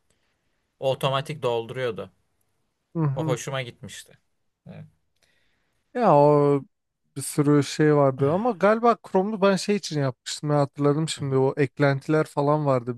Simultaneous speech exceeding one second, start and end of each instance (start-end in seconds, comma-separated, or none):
none